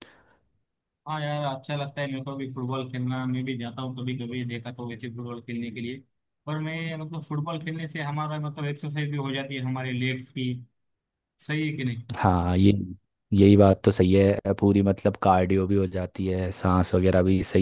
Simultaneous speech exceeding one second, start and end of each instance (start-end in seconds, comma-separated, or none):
none